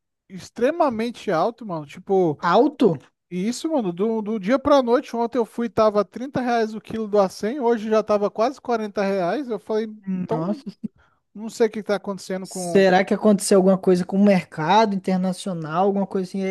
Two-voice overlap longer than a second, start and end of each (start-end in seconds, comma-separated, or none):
none